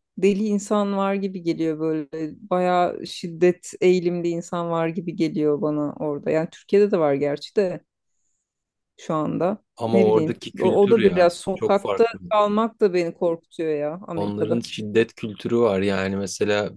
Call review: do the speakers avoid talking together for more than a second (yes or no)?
no